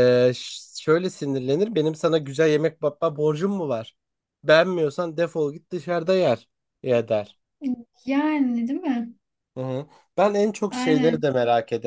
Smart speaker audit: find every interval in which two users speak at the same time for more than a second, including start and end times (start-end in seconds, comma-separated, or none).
none